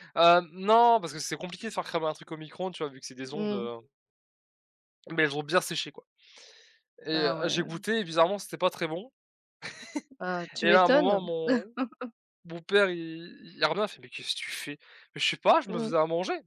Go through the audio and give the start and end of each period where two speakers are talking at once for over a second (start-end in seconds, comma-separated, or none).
none